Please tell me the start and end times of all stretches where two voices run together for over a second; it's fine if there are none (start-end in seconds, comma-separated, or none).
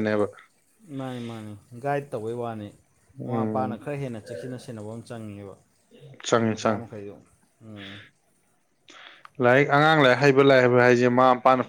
none